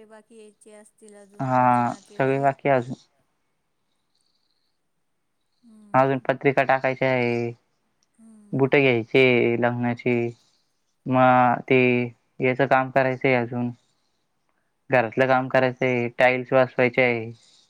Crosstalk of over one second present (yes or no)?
no